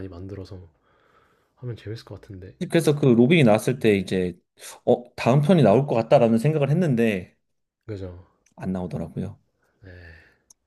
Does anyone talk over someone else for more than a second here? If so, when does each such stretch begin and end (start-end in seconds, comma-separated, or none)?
none